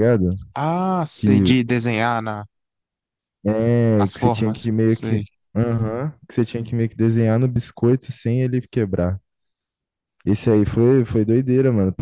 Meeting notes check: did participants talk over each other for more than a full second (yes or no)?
yes